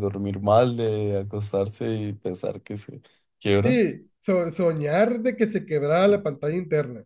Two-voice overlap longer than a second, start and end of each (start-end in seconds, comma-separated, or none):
none